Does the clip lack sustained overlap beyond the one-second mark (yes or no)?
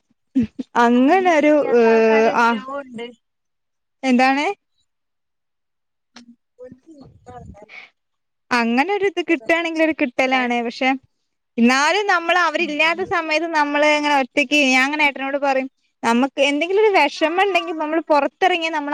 no